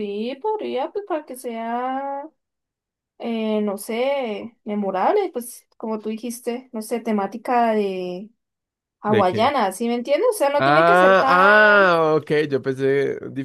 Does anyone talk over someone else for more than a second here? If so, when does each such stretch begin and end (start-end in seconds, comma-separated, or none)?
10.6-11.9